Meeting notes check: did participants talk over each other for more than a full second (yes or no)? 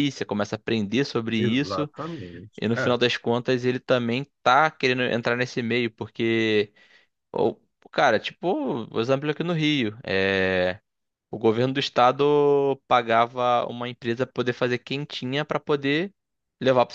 no